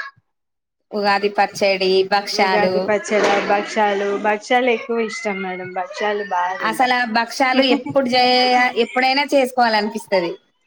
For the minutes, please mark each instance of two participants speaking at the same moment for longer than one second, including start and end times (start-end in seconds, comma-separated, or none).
none